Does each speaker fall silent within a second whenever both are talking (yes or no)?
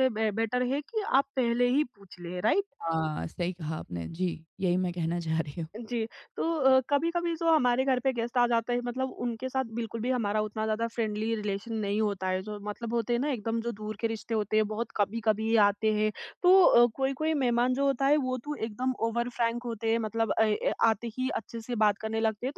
yes